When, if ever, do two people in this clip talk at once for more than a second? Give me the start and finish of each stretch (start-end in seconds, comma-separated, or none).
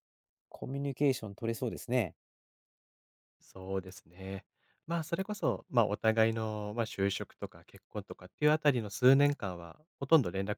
none